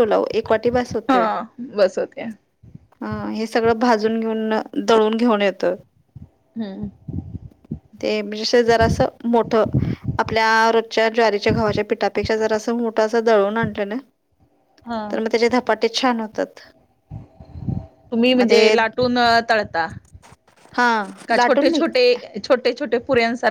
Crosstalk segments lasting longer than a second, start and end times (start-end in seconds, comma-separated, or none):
none